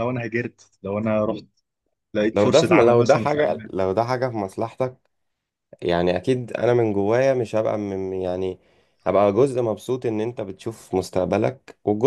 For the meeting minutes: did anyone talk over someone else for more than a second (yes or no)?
yes